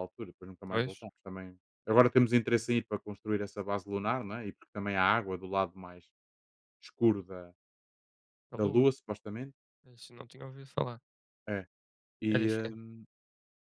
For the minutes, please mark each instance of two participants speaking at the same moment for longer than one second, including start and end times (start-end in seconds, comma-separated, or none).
none